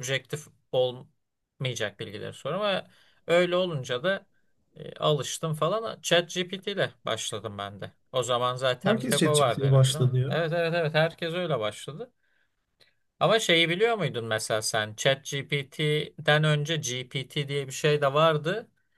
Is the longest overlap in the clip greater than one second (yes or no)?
yes